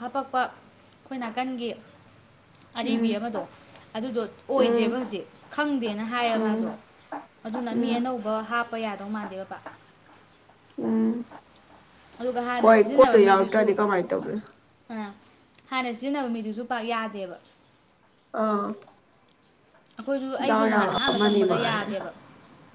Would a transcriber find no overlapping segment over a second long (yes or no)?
no